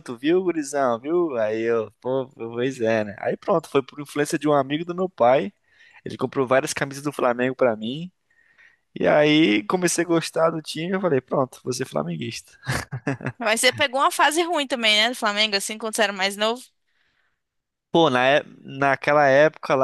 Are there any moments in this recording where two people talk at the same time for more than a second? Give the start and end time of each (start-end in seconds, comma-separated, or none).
none